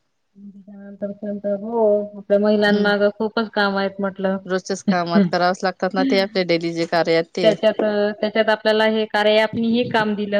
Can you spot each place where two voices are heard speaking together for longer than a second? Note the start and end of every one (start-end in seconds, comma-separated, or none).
none